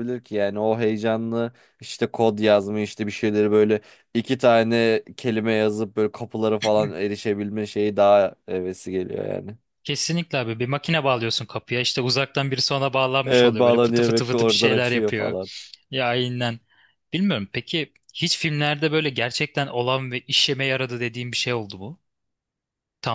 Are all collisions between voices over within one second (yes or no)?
no